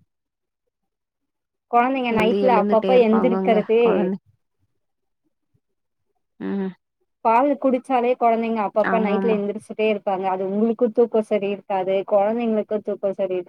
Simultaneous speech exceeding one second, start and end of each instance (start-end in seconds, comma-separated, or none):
2.1-3.8